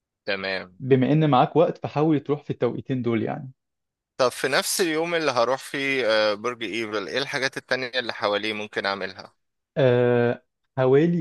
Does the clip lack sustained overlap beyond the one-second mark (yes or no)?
yes